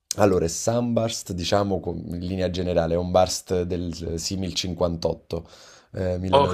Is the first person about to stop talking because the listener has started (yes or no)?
yes